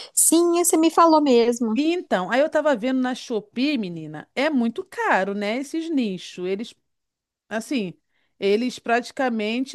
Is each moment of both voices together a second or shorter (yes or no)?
yes